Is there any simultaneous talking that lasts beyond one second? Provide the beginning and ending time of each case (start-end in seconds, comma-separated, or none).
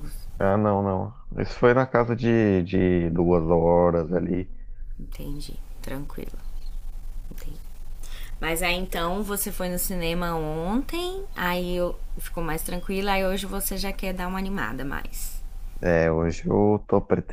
none